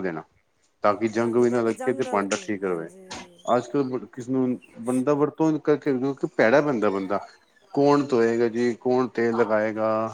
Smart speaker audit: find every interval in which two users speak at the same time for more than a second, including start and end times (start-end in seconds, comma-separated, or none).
1.2-2.9